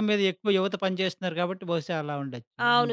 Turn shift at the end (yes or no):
yes